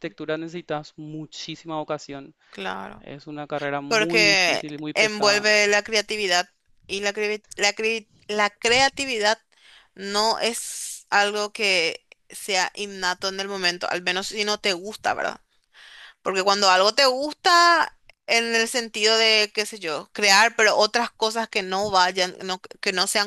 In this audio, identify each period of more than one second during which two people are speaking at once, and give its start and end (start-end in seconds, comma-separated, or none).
3.9-5.5